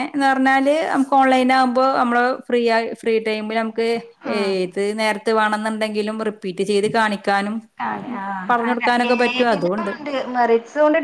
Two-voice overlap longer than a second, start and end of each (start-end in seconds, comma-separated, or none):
8.5-9.9